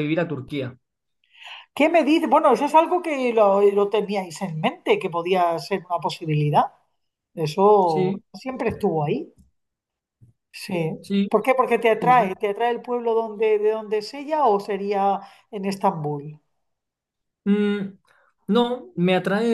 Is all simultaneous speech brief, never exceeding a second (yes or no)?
yes